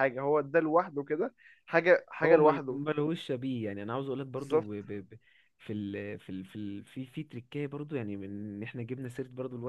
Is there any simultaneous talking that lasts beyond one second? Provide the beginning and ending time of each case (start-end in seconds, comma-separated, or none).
none